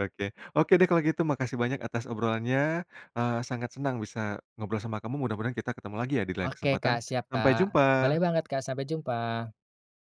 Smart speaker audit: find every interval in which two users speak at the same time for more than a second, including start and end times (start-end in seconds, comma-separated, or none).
6.4-8.2